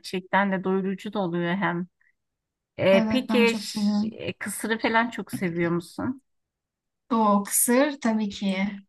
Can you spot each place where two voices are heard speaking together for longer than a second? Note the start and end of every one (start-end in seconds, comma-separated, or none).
2.9-4.2